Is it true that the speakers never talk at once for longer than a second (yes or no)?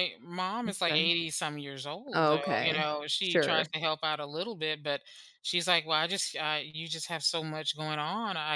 no